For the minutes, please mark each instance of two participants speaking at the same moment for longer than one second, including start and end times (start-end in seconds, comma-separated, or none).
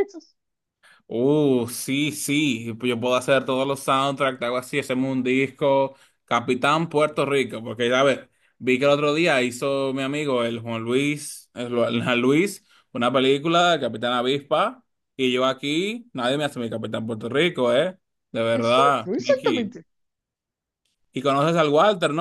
18.5-19.7